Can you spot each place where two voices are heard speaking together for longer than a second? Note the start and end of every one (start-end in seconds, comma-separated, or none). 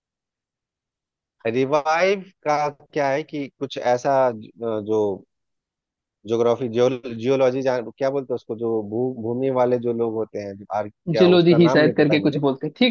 11.2-12.4